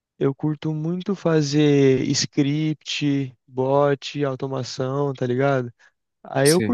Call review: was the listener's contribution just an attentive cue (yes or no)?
yes